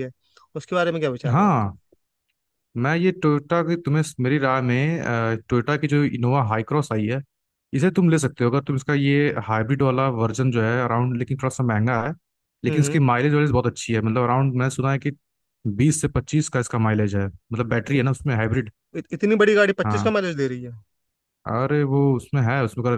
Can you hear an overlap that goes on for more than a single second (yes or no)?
no